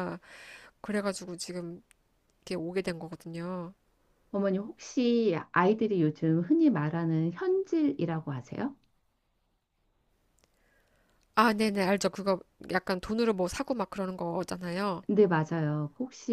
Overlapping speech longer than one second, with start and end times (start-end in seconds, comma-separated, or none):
none